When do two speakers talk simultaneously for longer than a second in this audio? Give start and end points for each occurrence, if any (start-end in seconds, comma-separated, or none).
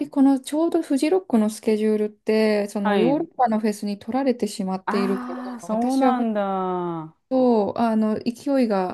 4.9-6.1